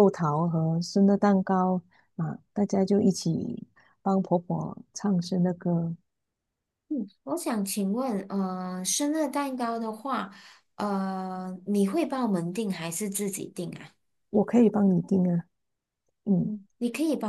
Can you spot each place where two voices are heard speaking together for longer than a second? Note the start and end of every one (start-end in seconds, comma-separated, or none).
none